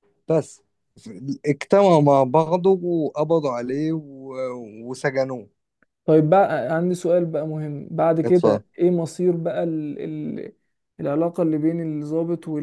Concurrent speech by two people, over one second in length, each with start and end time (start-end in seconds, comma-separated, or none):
none